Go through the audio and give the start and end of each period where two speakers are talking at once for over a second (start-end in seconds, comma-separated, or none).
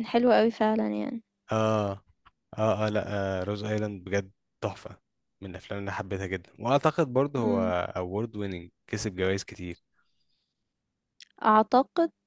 none